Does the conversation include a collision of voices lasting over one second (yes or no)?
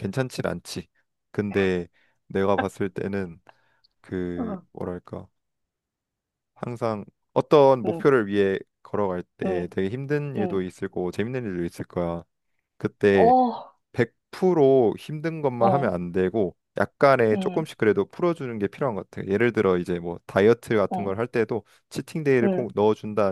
no